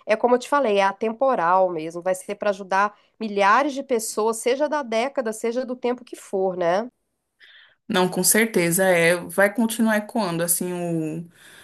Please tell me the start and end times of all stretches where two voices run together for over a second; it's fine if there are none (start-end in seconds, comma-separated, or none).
none